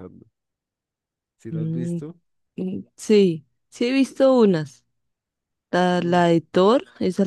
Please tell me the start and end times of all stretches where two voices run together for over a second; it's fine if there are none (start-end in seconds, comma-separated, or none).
none